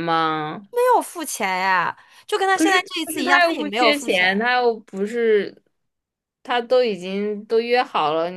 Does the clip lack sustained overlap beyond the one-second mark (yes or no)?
no